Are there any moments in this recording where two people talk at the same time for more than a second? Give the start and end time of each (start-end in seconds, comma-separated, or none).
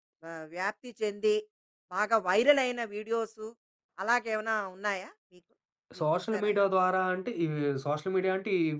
none